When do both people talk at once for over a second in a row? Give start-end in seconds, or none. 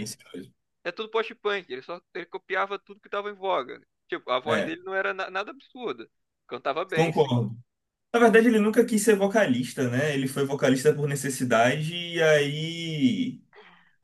none